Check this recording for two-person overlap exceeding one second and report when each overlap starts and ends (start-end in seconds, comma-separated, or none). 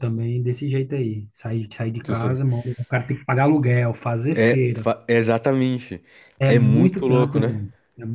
6.4-7.6